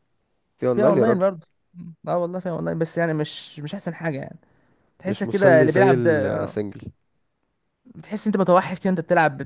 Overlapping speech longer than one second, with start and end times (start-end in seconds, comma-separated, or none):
5.0-6.5